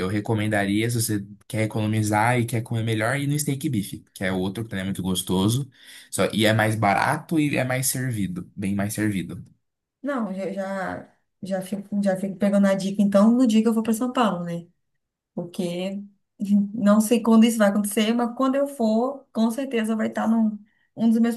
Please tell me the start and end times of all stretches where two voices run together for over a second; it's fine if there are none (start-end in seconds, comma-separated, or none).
none